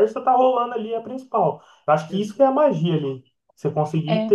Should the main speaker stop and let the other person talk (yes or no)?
no